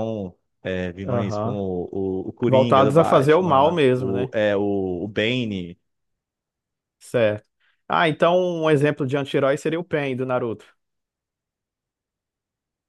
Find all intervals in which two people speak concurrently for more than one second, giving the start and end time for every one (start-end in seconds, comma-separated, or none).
2.5-4.3